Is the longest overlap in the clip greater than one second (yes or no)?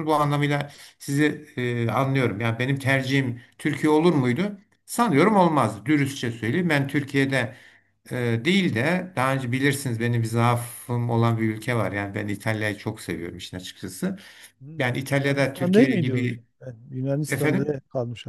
yes